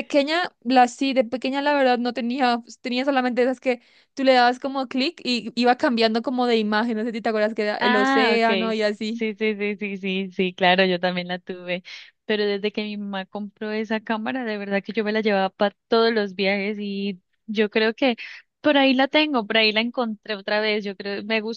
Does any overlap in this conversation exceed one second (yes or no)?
yes